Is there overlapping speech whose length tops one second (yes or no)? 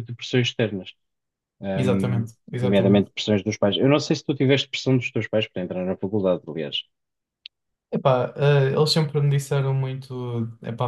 yes